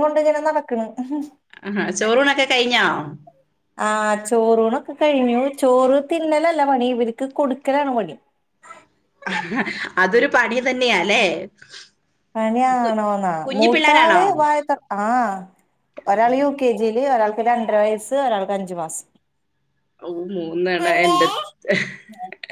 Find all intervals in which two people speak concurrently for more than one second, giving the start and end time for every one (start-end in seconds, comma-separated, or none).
none